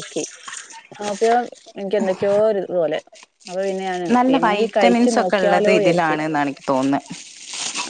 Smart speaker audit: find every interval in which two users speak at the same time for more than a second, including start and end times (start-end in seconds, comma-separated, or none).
4.2-6.2